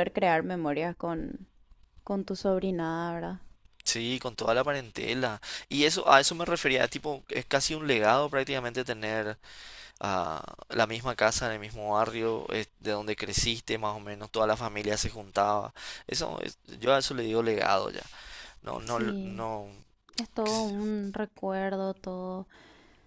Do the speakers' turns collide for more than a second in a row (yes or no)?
no